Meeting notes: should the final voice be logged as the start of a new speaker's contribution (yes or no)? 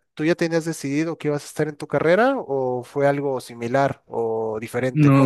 yes